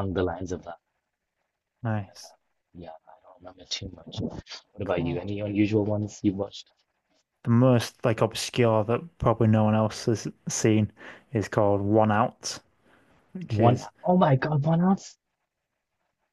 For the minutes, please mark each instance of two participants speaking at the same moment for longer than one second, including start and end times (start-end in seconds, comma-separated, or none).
none